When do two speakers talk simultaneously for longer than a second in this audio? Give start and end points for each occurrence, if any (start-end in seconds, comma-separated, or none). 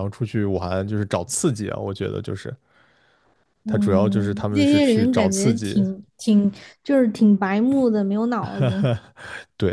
3.7-5.8